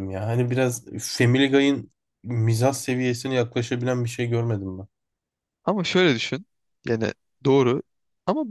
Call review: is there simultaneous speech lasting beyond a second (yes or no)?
no